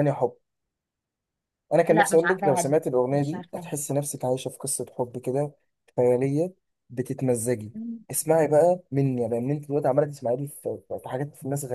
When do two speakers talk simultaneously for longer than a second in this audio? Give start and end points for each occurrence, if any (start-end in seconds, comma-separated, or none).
1.9-3.7